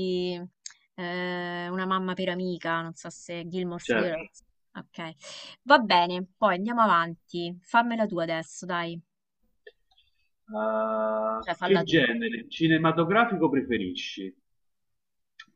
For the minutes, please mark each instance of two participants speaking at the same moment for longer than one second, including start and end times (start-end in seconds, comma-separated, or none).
none